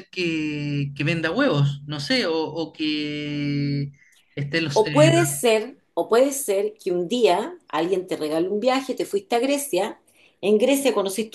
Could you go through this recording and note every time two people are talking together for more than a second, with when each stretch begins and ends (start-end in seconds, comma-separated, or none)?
none